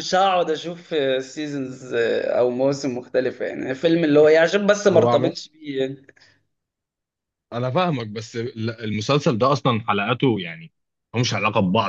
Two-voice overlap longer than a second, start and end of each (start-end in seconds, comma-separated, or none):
none